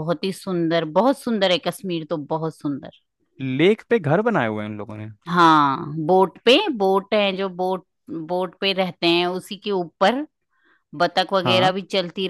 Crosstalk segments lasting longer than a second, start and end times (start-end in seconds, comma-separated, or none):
none